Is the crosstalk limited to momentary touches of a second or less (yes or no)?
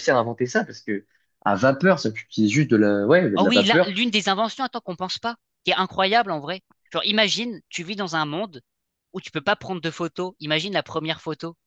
yes